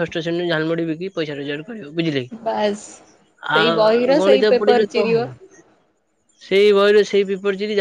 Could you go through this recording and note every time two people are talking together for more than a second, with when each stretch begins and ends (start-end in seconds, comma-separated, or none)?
3.6-5.2